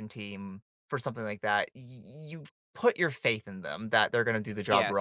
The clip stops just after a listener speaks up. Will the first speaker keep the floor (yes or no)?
yes